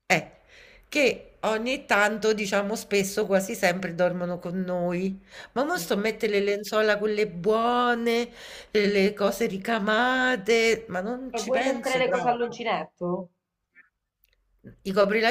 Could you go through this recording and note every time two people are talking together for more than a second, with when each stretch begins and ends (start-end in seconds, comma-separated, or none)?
11.3-12.6